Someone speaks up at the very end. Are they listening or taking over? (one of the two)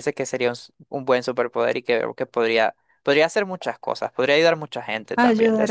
taking over